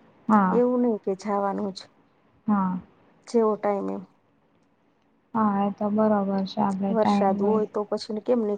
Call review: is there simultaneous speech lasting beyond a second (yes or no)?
no